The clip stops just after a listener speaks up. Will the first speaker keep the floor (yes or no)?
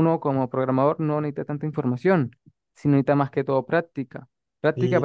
no